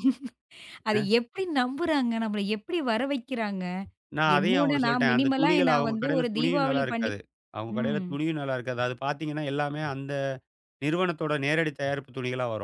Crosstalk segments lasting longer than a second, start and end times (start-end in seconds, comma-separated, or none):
4.4-7.1